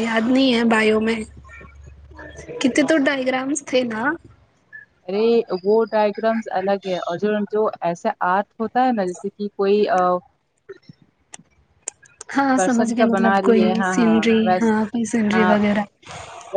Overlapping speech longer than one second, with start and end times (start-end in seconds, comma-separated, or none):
12.5-14.7